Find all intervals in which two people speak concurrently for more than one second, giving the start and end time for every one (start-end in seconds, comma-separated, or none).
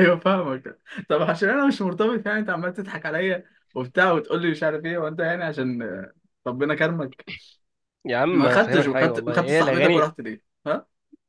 8.3-10.1